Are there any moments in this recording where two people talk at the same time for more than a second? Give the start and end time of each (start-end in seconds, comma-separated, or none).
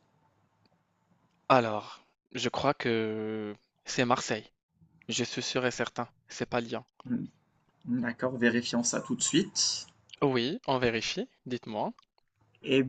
none